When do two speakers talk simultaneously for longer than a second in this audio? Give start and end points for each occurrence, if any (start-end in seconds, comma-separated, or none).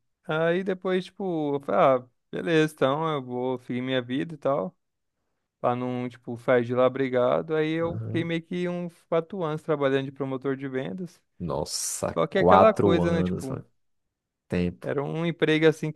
12.2-13.6